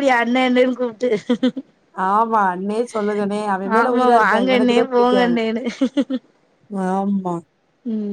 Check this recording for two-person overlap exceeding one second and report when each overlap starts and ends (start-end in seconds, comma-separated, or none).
3.8-5.3